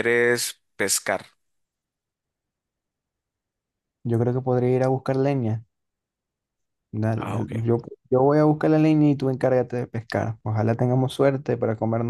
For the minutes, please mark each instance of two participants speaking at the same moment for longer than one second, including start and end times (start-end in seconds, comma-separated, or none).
none